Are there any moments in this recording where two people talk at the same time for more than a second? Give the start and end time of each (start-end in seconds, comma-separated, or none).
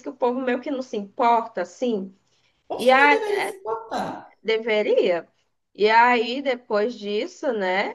none